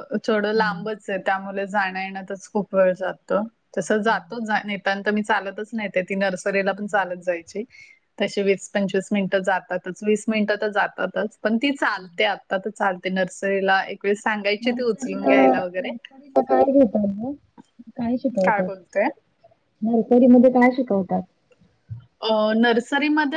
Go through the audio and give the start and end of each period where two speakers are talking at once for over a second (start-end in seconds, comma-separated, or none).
none